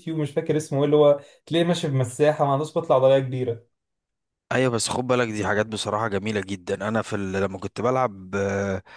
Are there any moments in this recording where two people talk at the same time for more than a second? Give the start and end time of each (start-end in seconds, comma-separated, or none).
none